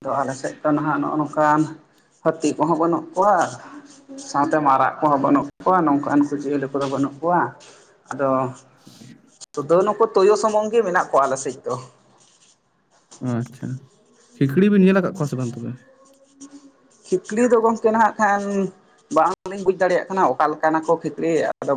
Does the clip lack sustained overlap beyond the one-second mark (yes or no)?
yes